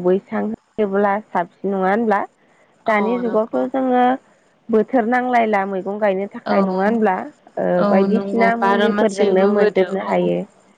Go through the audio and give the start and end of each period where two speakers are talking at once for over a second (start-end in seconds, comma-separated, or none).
7.8-10.1